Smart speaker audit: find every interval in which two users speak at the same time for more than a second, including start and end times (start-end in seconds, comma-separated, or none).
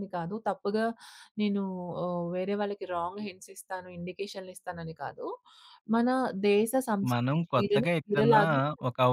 7.1-8.4